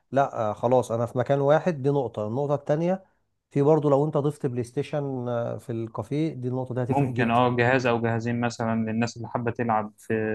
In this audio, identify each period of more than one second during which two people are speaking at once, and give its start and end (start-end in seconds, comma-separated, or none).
none